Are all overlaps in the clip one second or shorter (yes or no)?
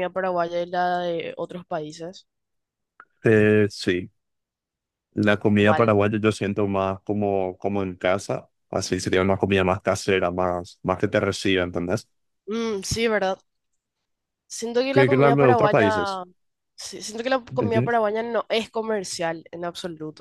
no